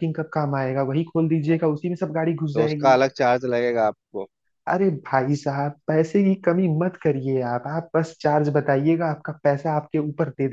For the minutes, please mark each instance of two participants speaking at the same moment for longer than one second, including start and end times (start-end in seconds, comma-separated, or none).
none